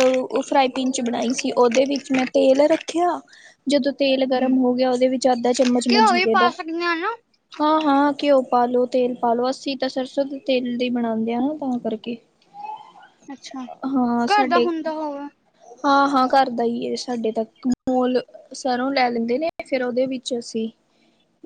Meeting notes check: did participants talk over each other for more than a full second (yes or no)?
no